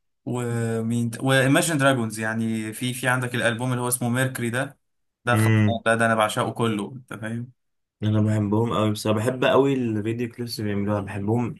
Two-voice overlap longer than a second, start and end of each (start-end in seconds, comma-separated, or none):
none